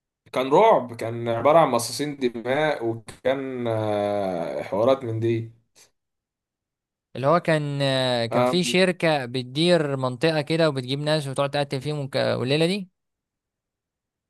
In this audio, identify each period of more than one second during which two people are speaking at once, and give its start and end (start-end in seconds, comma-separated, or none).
none